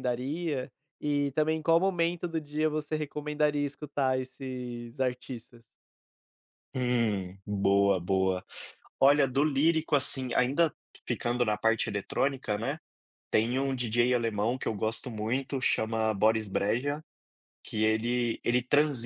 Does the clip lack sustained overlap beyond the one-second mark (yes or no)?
yes